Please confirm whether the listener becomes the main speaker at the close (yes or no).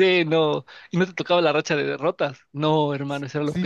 yes